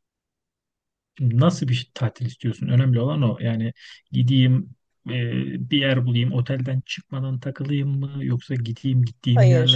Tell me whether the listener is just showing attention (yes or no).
yes